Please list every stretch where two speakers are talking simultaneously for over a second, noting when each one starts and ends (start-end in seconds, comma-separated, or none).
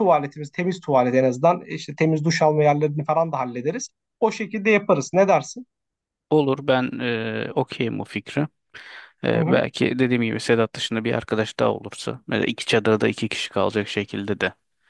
none